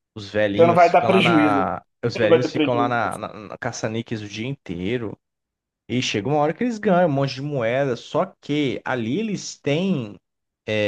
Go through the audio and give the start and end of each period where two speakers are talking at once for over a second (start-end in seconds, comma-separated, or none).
0.6-3.0